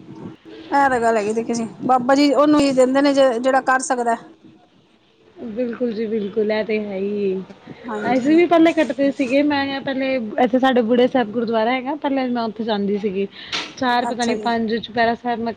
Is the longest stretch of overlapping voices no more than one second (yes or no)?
yes